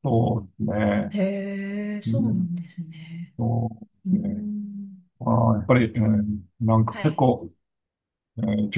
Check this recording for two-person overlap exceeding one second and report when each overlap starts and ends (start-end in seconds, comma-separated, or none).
none